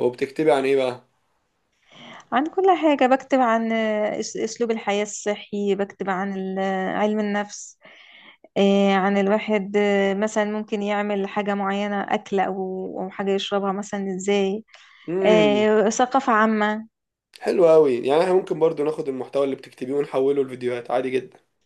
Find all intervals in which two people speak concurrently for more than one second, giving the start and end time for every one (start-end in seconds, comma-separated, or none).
none